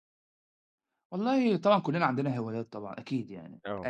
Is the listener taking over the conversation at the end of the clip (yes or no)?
no